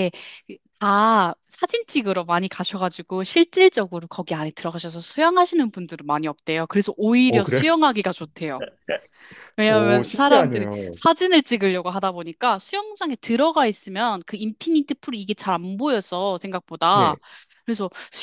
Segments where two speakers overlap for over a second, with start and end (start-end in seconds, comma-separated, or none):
9.7-11.0